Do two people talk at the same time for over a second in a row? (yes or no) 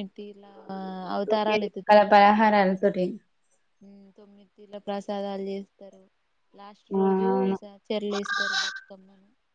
yes